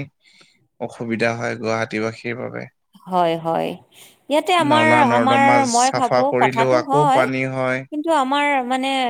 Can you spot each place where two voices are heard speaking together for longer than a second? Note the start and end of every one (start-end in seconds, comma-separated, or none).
4.7-7.2